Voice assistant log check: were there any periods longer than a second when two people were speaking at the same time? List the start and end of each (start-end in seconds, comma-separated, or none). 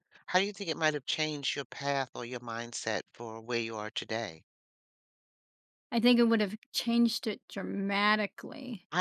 none